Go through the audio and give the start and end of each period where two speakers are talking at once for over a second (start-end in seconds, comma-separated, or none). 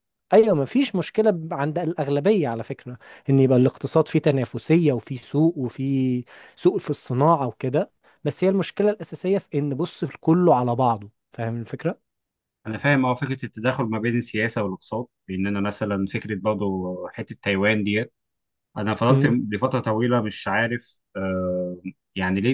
none